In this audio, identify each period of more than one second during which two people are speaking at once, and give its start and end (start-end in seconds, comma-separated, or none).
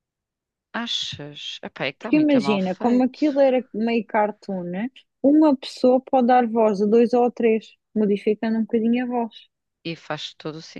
2.0-3.2